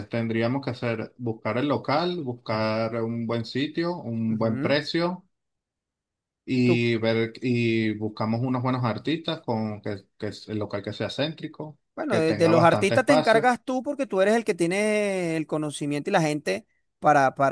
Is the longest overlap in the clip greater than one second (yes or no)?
yes